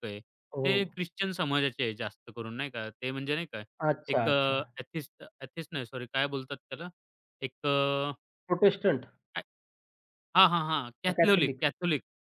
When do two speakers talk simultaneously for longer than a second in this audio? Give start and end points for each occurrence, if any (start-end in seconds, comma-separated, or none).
none